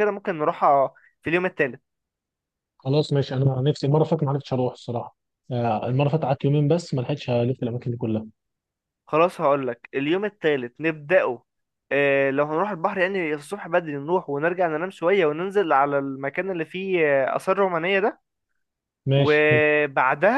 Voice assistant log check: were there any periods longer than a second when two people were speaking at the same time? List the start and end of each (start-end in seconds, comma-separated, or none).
none